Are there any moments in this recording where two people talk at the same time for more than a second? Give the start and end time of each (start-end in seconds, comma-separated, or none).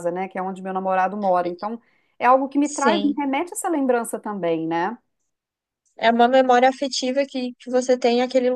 none